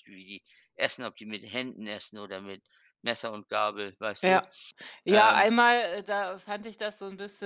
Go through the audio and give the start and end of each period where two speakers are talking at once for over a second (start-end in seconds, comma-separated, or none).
none